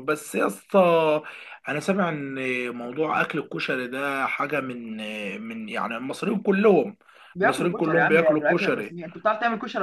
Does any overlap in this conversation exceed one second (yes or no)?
yes